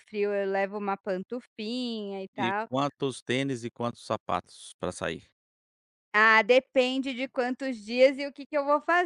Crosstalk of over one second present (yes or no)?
no